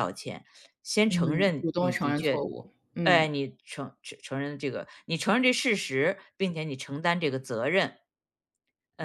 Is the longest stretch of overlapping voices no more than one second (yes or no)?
no